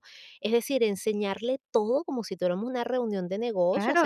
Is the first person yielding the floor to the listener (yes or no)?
yes